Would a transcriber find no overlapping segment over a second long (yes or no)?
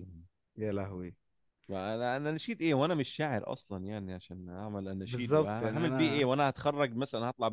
no